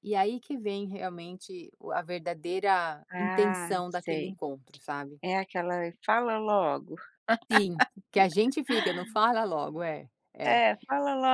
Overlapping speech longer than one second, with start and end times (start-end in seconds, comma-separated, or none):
3.1-4.3